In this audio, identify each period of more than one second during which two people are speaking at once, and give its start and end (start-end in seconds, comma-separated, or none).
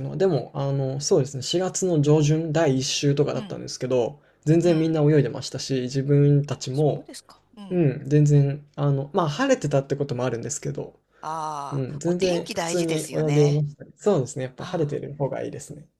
11.7-13.6